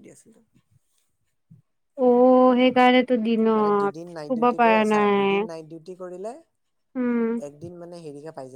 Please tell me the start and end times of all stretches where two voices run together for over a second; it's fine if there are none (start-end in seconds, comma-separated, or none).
none